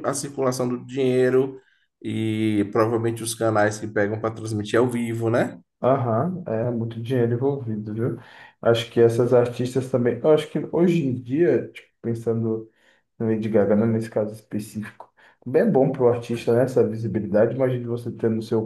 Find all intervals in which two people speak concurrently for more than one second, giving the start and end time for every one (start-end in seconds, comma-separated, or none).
none